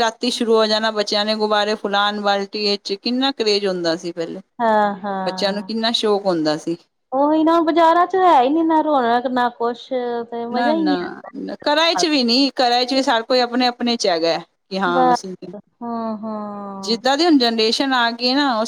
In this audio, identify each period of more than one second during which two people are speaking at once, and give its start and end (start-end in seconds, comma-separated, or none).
none